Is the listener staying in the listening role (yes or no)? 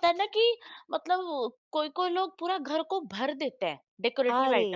yes